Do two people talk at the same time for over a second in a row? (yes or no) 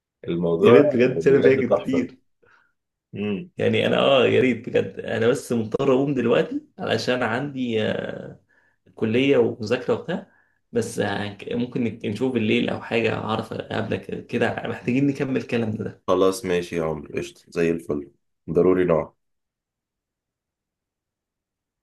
yes